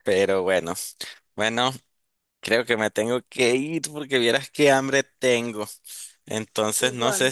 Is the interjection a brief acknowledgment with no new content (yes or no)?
yes